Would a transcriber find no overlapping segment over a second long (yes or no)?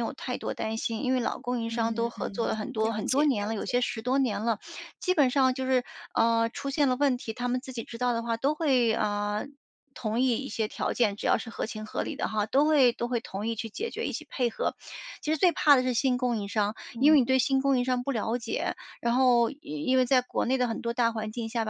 no